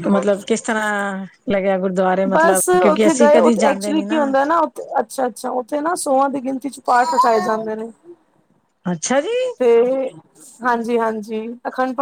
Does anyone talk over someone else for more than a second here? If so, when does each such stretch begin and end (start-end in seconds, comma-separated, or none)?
2.3-4.2